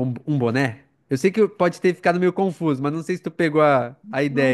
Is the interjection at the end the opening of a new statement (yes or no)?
yes